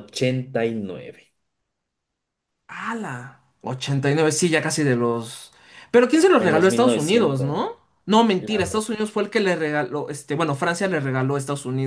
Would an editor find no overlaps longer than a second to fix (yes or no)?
no